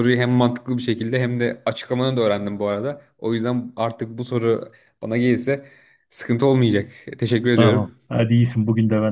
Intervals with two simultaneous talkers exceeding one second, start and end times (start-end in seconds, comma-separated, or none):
none